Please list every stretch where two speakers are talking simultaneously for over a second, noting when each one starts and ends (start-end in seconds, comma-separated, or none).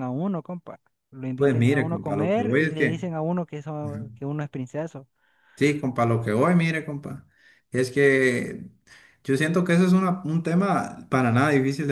1.4-3.1